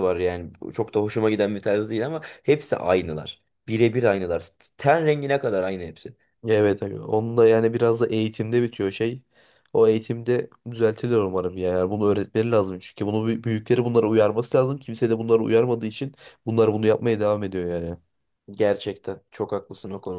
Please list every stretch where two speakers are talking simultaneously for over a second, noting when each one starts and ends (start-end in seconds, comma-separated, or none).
none